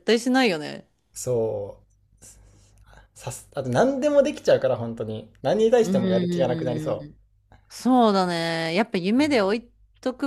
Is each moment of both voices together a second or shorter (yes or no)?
no